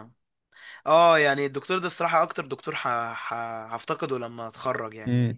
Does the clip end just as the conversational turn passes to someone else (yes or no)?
no